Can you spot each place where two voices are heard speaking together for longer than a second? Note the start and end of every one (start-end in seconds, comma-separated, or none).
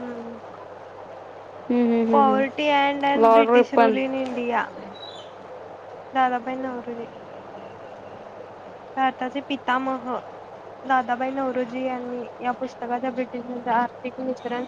2.1-4.0